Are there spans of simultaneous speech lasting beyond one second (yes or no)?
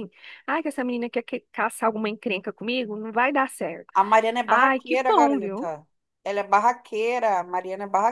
yes